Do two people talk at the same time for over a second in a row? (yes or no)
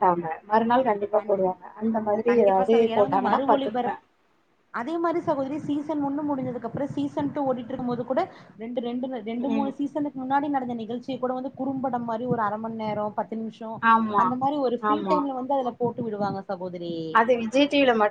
yes